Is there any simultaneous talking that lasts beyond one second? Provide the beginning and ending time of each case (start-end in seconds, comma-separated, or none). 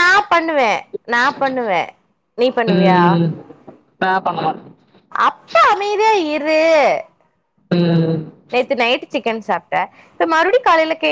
none